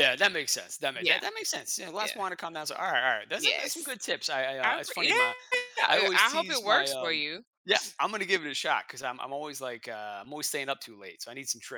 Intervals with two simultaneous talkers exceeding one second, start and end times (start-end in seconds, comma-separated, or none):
5.9-7.2